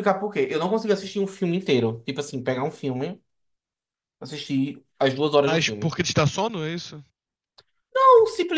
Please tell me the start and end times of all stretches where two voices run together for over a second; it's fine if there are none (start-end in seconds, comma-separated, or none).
none